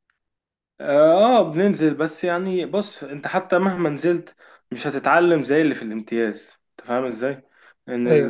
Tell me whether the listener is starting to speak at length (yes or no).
no